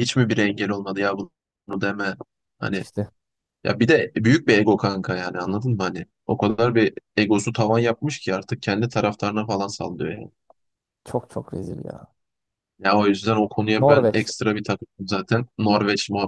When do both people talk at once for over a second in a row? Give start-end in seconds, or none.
none